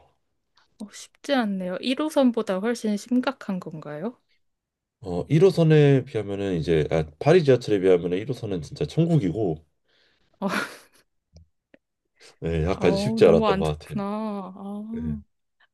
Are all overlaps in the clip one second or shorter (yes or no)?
no